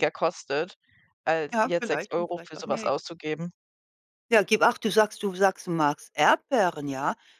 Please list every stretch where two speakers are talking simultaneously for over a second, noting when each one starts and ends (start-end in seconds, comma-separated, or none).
1.5-3.0